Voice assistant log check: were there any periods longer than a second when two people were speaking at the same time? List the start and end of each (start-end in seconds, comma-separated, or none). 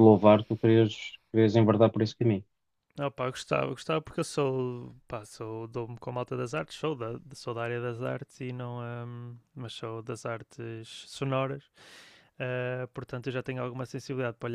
none